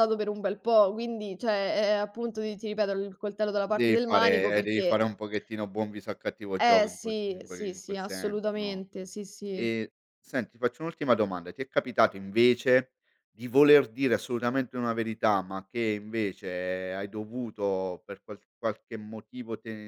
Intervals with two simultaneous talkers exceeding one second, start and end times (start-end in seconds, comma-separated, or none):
3.7-5.1, 6.6-8.8